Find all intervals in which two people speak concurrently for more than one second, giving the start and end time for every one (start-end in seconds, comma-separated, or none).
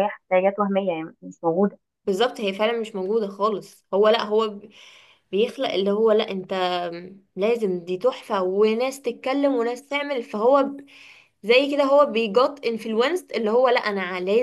none